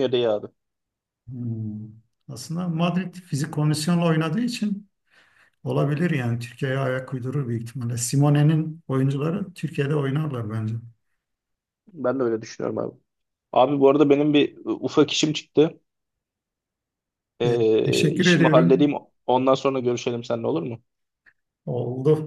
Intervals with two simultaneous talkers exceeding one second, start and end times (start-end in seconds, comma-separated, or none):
17.4-18.9